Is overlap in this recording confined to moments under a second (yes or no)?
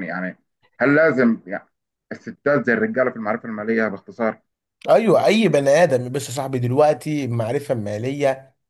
yes